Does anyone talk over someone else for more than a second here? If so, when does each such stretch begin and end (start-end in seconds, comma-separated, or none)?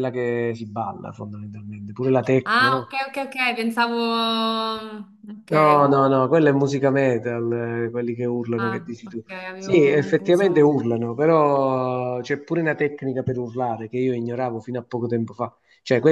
8.6-10.8